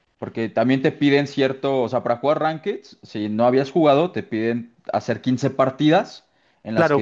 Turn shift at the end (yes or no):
yes